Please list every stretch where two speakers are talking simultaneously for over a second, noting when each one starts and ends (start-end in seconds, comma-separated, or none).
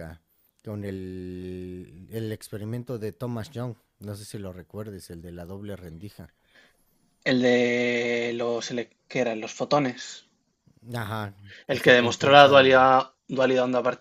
11.7-12.9